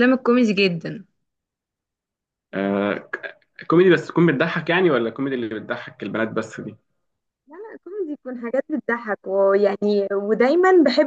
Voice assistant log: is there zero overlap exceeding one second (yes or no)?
yes